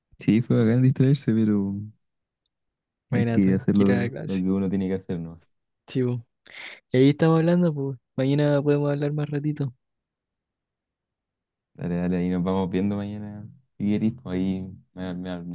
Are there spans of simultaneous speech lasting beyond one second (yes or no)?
yes